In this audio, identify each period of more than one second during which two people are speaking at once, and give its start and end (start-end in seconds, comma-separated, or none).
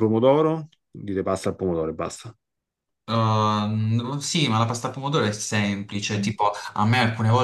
none